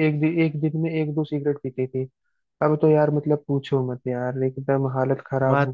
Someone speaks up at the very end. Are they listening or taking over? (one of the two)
taking over